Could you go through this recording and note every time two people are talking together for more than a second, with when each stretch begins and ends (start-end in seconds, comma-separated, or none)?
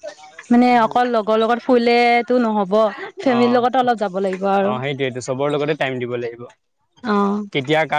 3.4-4.7